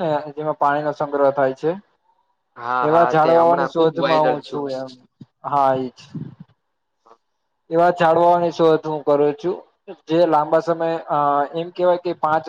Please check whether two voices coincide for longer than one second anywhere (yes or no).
yes